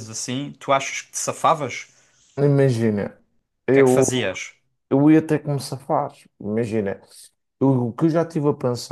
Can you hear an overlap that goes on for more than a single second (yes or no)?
no